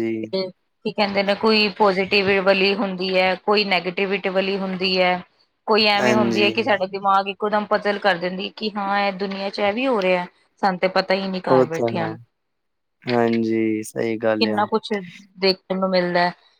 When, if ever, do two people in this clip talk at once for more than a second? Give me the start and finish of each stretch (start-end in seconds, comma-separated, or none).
none